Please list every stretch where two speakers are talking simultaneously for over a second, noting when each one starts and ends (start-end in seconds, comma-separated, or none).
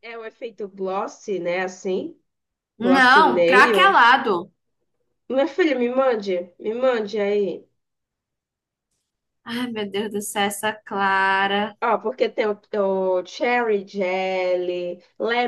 2.8-4.0